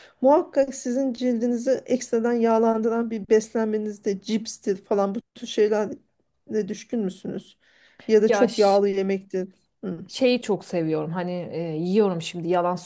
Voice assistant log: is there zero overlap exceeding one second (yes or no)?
yes